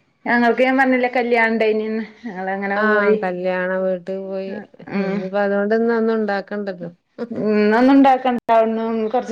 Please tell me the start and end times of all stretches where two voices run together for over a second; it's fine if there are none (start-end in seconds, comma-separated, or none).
none